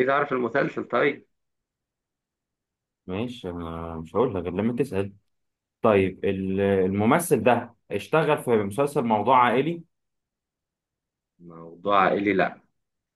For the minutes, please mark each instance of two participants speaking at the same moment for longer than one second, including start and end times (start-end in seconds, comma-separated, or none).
none